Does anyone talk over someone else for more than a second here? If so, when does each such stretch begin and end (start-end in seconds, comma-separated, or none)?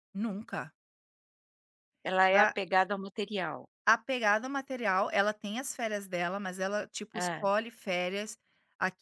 none